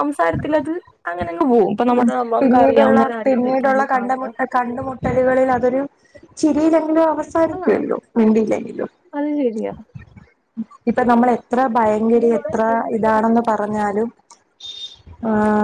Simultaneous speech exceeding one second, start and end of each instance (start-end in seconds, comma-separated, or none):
2.6-4.3